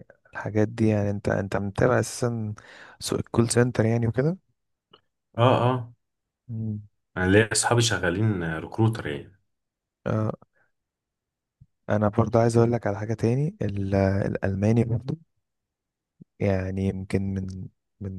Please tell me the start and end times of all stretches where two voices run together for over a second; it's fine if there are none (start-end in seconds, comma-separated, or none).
none